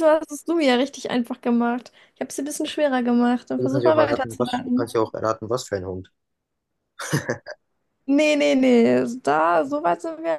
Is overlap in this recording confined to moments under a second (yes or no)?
no